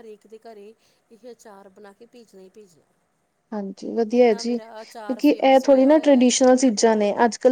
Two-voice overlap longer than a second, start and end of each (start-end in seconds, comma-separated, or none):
4.2-6.3